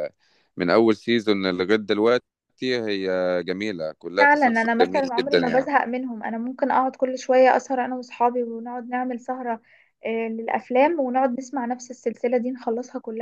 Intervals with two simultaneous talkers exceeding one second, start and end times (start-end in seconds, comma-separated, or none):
4.2-5.7